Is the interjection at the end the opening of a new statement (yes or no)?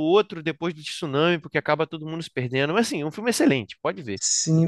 yes